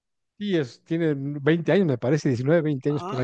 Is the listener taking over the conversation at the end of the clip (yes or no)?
yes